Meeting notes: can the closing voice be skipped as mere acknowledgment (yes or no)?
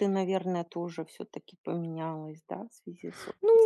no